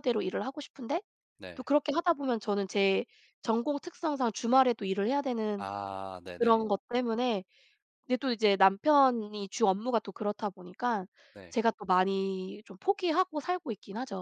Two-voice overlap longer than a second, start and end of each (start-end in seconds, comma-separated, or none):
none